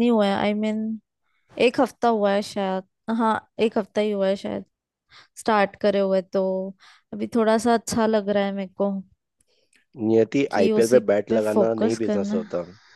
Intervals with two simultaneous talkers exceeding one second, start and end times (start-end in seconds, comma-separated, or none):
10.5-12.4